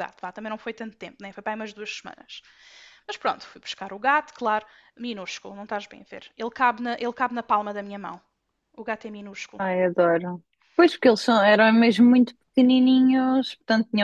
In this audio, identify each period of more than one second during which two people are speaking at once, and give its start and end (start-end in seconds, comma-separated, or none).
none